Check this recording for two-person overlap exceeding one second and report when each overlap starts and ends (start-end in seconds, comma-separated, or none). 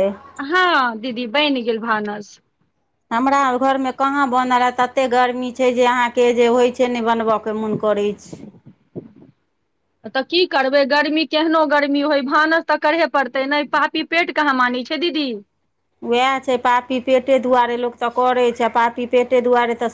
none